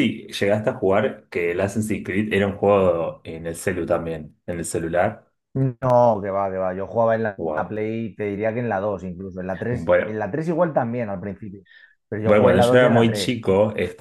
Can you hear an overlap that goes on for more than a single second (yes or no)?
yes